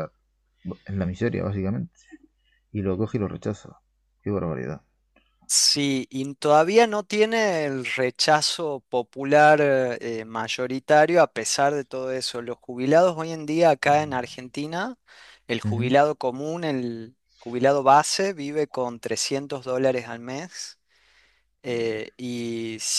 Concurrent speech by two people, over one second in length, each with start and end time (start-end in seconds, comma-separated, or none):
none